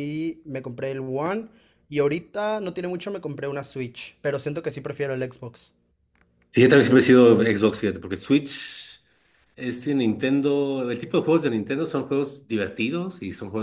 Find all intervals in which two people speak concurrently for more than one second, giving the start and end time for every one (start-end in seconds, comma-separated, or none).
none